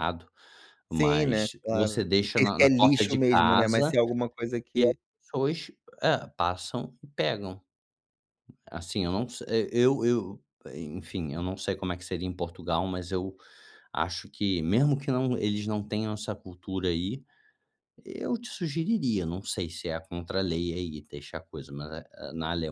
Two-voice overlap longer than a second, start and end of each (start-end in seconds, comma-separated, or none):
0.9-3.9